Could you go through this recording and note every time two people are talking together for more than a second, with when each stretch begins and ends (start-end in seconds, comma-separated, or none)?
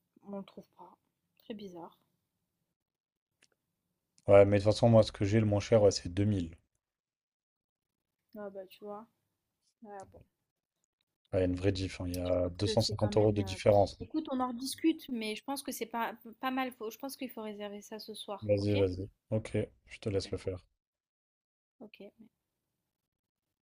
12.2-13.6